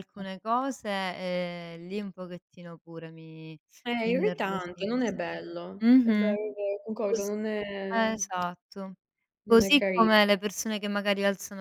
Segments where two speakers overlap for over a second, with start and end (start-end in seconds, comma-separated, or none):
4.0-6.3